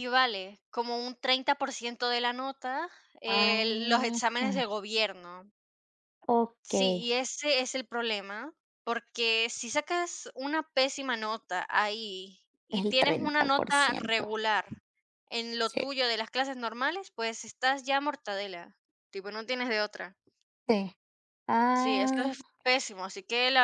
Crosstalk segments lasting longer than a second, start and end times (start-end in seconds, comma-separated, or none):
12.7-14.2